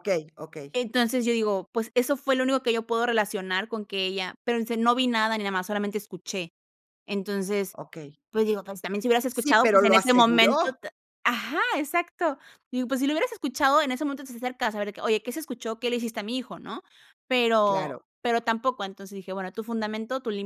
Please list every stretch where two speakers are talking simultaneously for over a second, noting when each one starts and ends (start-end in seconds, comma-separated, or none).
9.3-10.8